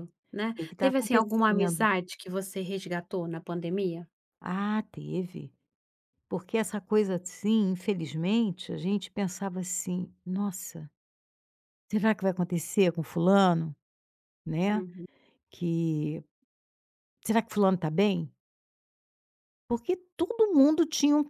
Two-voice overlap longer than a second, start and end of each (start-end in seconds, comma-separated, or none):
0.5-1.8